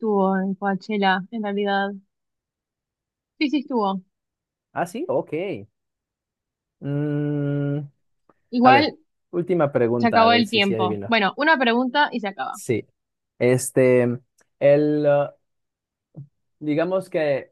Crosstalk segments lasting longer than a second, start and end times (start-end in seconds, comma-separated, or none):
10.0-11.2